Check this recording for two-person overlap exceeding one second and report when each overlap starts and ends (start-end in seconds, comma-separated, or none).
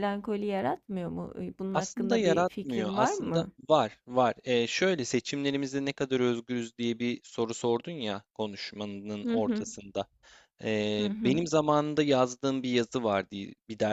1.7-3.5